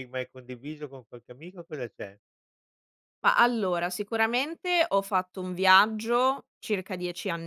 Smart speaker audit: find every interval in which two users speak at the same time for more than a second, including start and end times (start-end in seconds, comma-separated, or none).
none